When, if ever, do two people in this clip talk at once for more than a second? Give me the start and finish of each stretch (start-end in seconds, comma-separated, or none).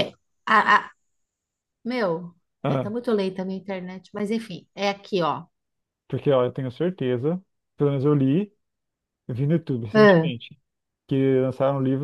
none